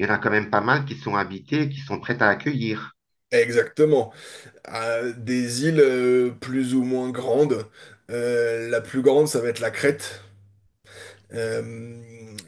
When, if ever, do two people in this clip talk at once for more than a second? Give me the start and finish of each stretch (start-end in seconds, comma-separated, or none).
none